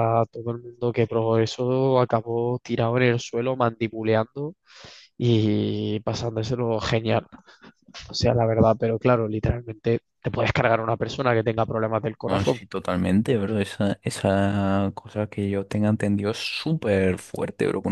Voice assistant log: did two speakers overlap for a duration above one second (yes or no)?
no